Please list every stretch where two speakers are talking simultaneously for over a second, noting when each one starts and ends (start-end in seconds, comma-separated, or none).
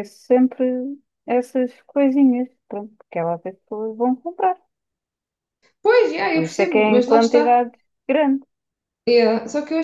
6.3-7.6